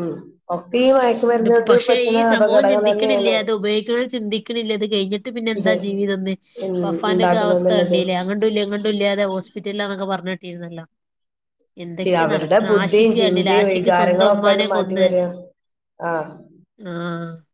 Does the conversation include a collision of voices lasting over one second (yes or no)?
yes